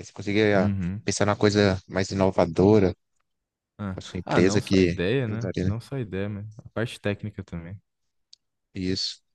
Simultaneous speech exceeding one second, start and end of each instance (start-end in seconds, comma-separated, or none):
3.9-5.7